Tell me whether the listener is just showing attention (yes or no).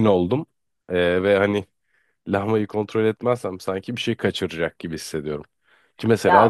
yes